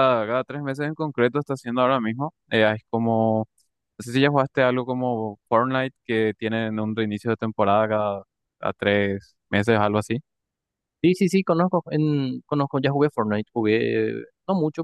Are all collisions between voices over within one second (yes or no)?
yes